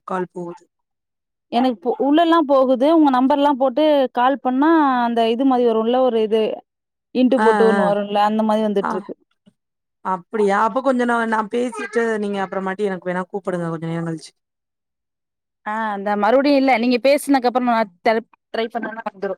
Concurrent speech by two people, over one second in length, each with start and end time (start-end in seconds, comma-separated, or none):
none